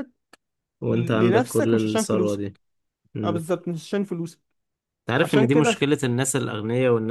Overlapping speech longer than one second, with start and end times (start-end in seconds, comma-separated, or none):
0.9-2.4